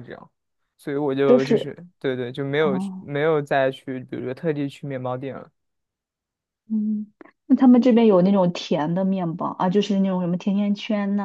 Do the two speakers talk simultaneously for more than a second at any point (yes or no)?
no